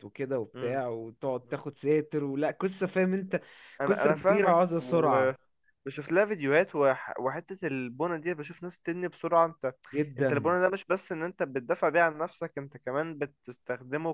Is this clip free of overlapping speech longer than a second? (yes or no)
no